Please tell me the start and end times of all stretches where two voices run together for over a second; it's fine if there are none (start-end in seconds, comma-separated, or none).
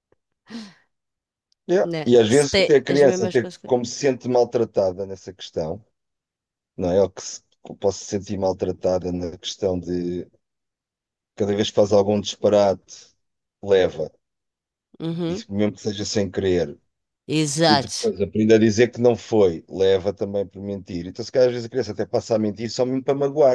1.8-3.9